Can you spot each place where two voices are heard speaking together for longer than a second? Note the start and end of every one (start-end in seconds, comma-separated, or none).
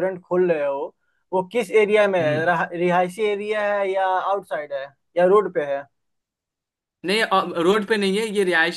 none